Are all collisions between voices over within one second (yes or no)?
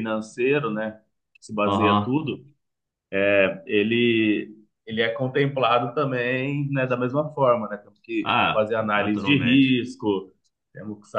no